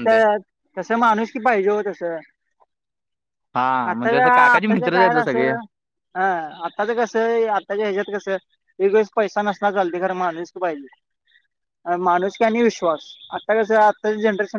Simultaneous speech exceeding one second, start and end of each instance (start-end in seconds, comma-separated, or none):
3.9-5.5